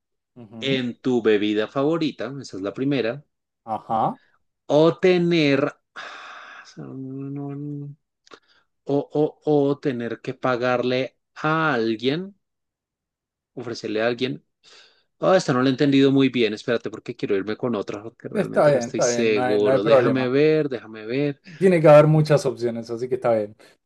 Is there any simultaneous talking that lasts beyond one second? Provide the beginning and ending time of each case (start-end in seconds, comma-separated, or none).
18.3-20.3